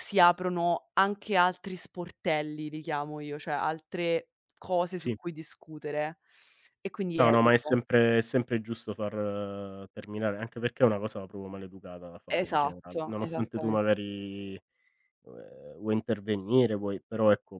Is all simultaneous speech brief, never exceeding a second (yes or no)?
no